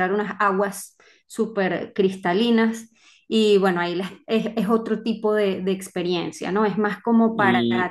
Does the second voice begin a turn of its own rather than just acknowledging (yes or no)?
no